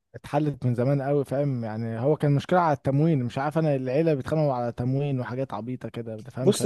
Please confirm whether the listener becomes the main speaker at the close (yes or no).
yes